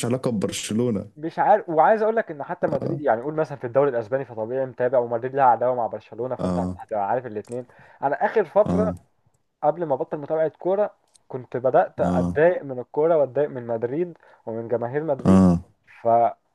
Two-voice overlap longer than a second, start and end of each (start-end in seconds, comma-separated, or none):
none